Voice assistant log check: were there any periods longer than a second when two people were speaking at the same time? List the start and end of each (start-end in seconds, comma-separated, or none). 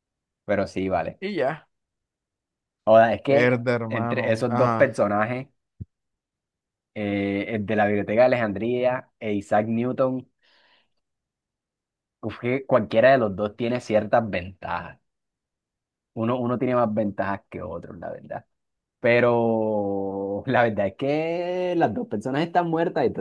3.3-5.0